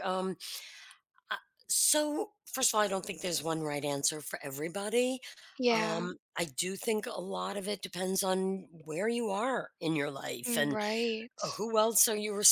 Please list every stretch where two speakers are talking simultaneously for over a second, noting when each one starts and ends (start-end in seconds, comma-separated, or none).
none